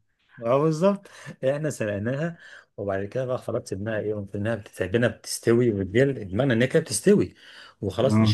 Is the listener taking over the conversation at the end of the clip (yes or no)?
no